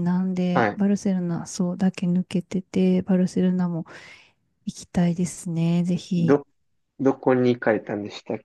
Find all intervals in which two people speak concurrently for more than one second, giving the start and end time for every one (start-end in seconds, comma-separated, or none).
none